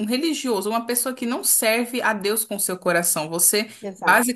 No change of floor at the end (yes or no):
yes